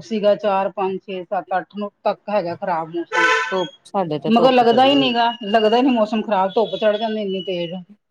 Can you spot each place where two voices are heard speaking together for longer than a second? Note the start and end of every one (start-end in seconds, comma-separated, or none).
3.5-5.0